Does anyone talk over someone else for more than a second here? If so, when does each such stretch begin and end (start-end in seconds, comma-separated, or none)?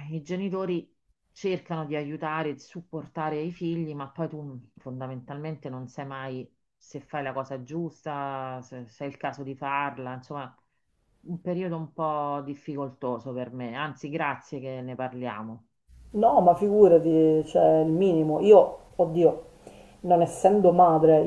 none